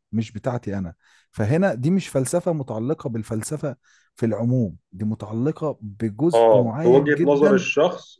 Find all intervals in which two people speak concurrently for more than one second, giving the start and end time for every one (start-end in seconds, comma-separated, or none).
6.3-7.6